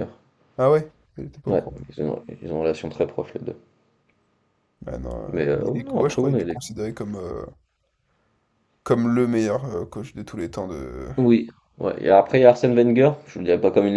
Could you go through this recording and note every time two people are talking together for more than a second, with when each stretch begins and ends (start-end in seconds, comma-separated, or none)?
5.3-6.6